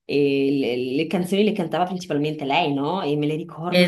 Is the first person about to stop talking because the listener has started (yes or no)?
no